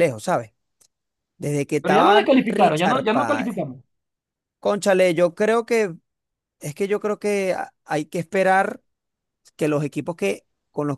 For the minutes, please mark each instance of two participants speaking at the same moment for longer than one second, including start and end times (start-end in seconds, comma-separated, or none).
1.8-3.6